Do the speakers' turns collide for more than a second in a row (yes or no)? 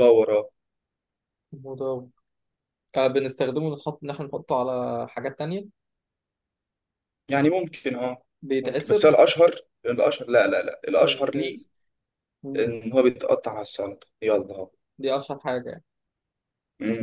no